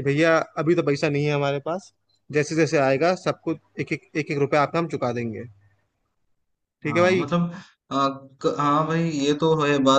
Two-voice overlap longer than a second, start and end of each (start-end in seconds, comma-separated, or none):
none